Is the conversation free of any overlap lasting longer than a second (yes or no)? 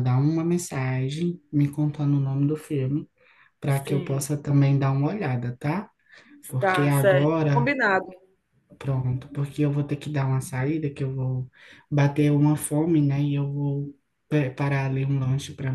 no